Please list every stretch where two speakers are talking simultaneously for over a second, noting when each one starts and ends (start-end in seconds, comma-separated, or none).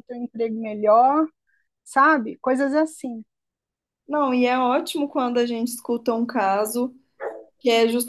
none